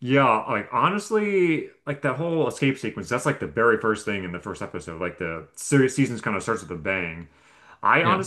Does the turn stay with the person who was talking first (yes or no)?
yes